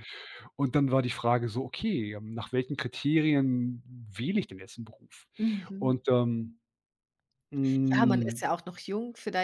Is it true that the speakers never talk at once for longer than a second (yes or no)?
yes